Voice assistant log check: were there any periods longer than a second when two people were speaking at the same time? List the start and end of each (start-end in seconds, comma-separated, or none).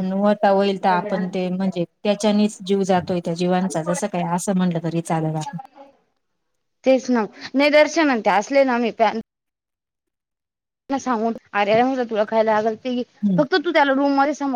none